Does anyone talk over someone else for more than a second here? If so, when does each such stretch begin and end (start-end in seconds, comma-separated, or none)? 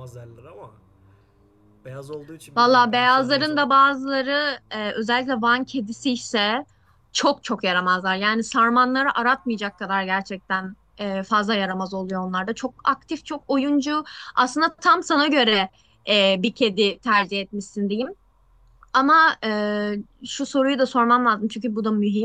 2.5-3.8